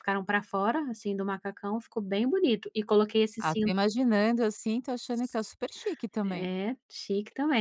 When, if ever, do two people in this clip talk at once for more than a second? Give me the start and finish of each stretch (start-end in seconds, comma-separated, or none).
none